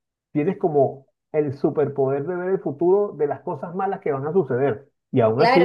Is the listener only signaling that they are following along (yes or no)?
no